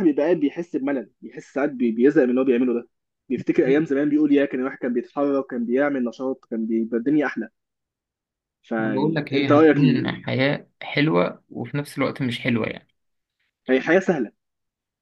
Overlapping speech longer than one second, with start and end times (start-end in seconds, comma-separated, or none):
8.8-10.2